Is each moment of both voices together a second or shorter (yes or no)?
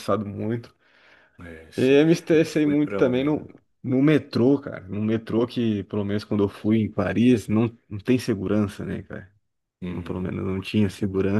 no